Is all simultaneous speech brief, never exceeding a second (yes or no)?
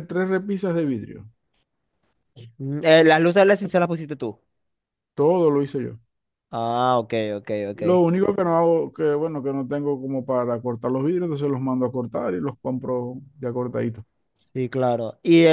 yes